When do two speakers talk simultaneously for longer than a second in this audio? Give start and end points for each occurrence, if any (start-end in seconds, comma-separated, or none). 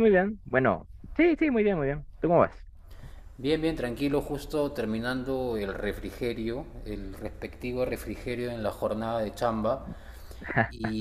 none